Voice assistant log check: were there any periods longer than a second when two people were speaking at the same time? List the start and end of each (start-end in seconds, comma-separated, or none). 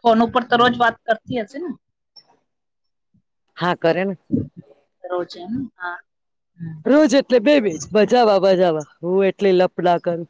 none